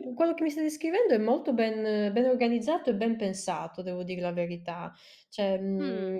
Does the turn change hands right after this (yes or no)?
no